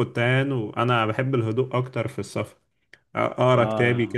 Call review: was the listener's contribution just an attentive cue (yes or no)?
yes